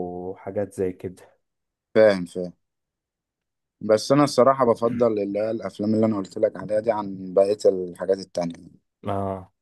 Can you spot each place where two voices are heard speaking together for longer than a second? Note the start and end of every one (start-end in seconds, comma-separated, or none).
none